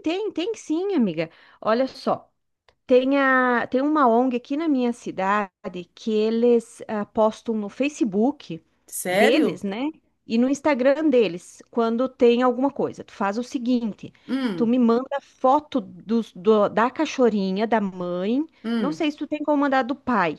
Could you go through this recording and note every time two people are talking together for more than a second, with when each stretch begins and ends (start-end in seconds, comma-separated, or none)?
none